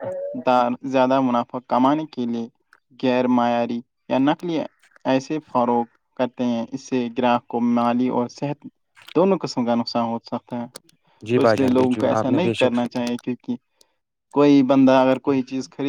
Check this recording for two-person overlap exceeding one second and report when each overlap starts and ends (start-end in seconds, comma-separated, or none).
11.3-12.9